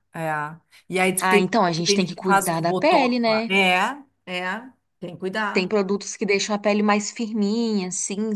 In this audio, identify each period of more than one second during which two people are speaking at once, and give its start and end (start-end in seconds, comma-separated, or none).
1.2-3.5